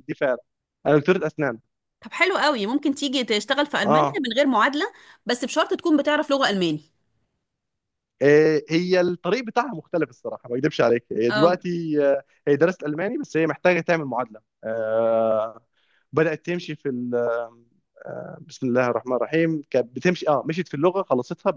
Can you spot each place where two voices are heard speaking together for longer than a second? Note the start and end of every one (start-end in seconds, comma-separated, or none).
none